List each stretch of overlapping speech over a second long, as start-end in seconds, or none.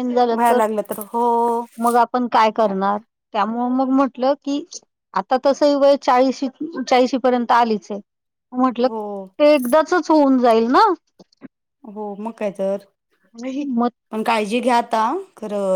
none